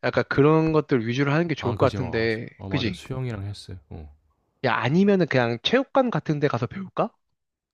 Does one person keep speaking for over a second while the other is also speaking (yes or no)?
yes